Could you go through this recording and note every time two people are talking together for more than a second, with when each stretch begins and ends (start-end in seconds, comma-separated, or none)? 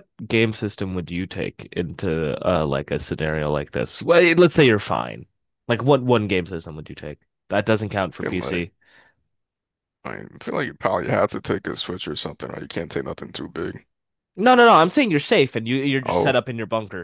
none